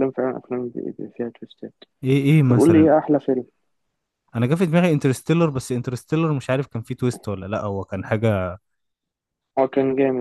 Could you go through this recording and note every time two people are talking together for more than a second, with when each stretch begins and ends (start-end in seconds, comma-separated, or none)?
none